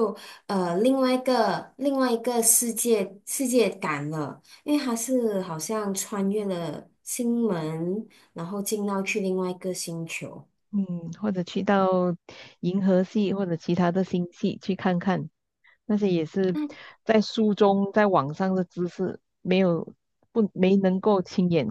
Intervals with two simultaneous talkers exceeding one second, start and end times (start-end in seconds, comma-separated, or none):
none